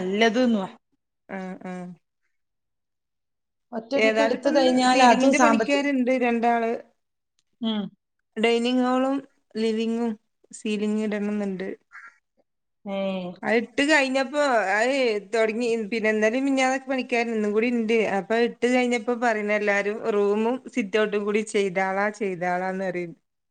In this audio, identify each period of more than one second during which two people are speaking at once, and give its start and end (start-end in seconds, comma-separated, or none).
4.0-5.8